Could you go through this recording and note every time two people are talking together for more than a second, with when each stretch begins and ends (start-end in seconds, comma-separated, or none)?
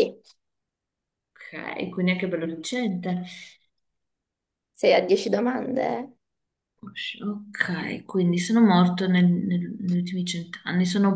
none